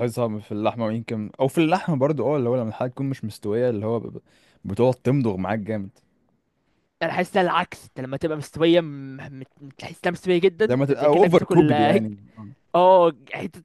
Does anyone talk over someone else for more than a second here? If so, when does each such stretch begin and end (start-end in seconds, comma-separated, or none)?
10.6-12.1